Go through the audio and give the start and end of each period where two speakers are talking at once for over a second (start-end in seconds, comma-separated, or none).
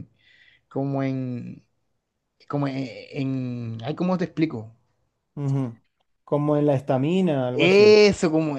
none